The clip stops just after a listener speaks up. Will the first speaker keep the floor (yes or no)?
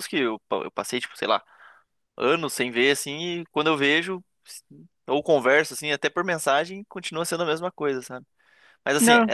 yes